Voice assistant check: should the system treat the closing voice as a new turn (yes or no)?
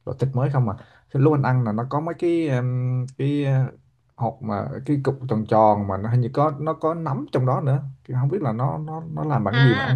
yes